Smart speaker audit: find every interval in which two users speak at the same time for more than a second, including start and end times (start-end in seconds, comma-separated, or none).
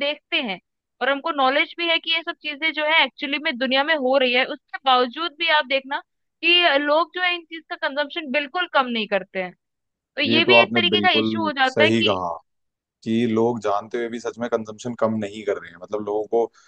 10.3-12.2